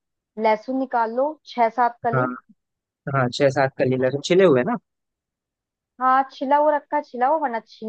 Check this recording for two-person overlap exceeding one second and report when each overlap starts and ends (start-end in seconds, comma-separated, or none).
none